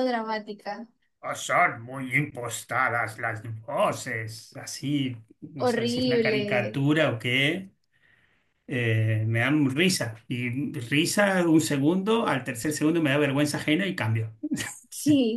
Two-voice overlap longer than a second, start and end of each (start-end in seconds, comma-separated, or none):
5.6-6.8